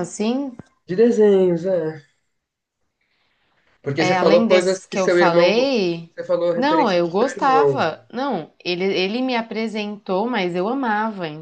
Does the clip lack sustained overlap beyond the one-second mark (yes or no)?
no